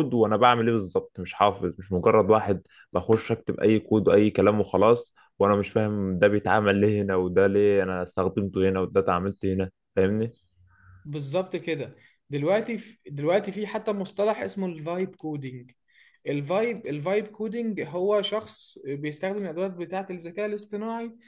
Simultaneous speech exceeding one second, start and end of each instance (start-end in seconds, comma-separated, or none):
none